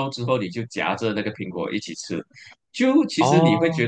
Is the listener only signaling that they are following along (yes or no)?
yes